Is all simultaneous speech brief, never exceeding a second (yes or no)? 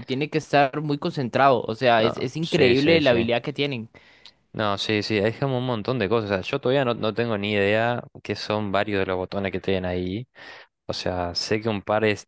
no